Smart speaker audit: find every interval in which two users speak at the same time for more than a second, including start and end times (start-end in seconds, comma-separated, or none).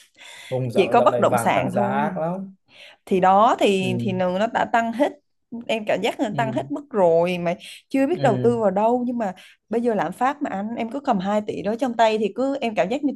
0.7-2.2